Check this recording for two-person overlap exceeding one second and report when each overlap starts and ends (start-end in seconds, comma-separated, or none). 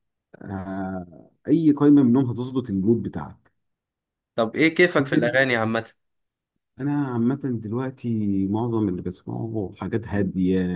none